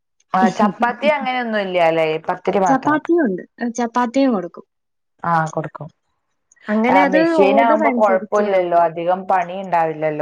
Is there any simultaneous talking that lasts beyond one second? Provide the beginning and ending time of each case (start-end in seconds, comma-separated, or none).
6.9-8.8